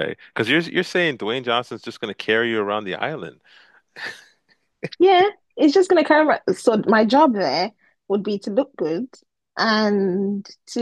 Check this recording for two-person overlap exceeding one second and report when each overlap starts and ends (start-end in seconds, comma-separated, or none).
none